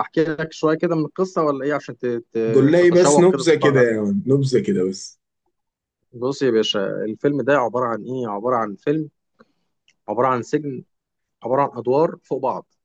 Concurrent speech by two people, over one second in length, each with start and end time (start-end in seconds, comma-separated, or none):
2.5-4.2